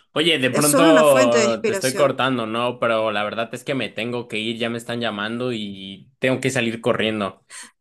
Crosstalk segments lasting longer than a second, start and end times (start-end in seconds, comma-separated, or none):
0.5-2.2